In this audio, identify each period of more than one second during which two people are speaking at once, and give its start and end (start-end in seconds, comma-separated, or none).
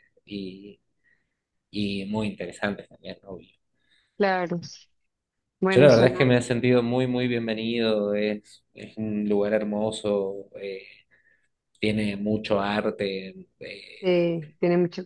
none